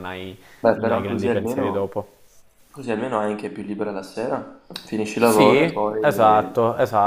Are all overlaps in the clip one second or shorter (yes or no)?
no